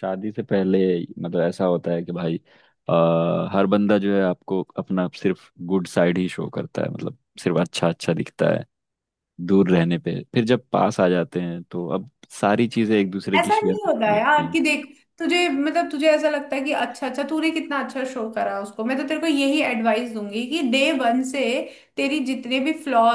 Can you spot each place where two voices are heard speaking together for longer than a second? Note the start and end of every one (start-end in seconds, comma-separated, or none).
13.4-14.6